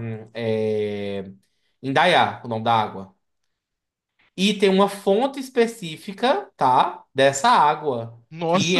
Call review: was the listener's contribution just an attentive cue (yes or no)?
yes